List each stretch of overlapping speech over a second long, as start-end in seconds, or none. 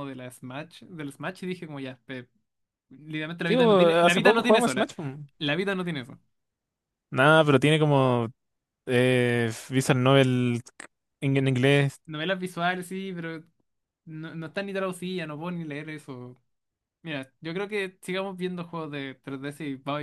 3.5-4.9